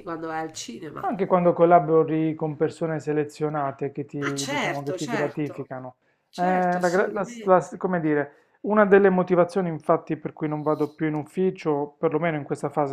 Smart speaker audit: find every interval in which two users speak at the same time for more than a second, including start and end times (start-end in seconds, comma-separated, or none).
4.2-5.7, 6.3-7.8